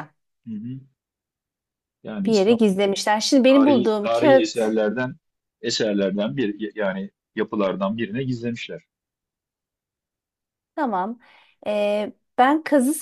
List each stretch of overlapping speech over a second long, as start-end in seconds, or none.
3.5-4.8